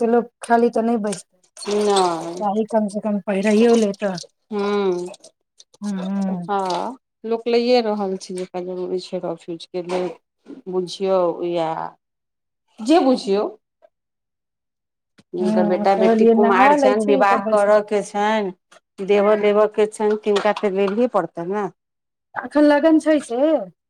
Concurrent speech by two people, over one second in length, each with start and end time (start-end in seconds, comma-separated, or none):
15.4-17.8